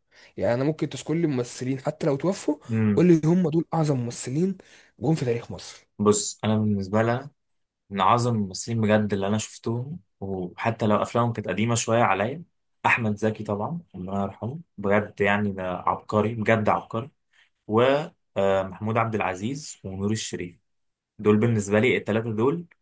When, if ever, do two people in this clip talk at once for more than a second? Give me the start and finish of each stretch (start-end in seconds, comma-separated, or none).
none